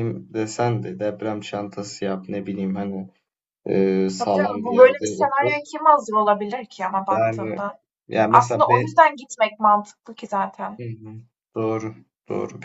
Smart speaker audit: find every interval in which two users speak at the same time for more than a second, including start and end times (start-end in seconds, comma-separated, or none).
4.2-5.5